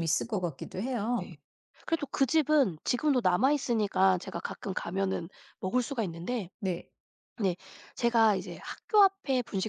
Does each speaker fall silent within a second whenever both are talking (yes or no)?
yes